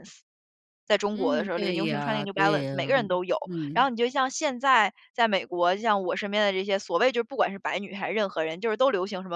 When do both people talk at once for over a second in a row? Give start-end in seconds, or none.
1.1-2.7